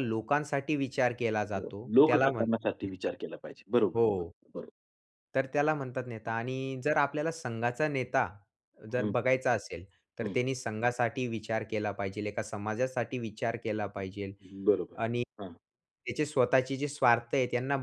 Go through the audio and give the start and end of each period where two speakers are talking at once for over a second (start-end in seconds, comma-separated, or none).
1.6-3.1